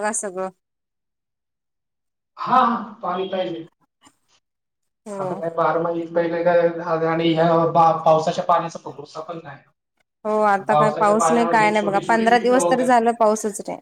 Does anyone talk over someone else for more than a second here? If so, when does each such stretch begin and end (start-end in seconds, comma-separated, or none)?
10.7-12.9